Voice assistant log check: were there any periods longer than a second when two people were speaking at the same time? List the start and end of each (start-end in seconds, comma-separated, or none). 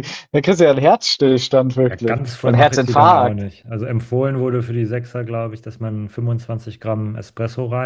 1.8-3.4